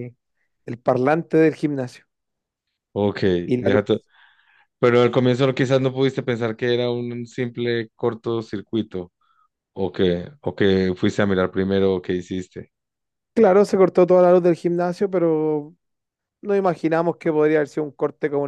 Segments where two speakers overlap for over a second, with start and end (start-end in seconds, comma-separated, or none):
none